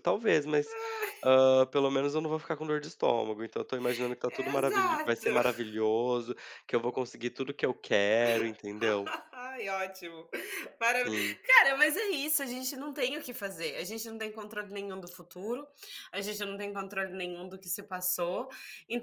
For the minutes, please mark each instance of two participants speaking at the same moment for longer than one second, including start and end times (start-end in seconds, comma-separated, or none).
4.3-5.6